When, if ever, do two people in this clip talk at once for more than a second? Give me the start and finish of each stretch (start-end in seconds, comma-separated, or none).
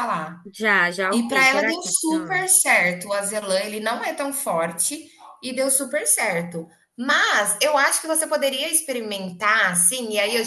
1.1-2.4